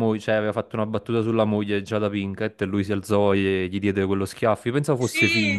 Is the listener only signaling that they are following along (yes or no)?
no